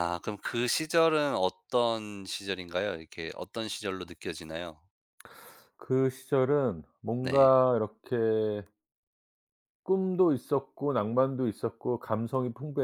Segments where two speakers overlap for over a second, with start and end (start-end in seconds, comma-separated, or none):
none